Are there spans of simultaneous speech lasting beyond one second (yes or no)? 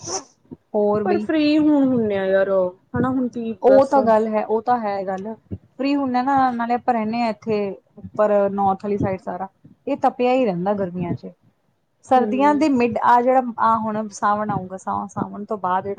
no